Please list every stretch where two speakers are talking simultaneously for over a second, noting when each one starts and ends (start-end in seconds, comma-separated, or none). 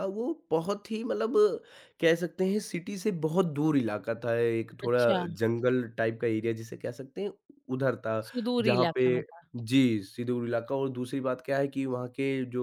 none